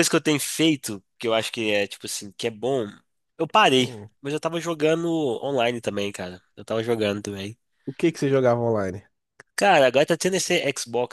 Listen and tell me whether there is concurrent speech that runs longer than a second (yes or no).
no